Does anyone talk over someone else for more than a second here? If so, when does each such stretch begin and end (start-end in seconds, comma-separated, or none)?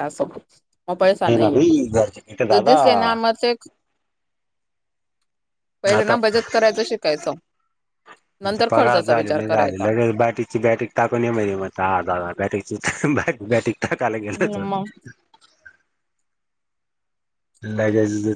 none